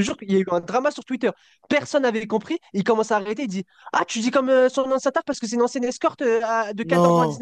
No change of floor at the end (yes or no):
yes